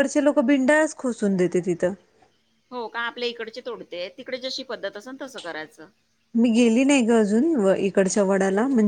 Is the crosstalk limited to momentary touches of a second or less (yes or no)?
yes